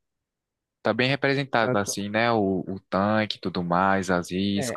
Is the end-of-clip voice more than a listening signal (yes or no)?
yes